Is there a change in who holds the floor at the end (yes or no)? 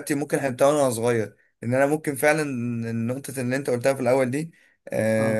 no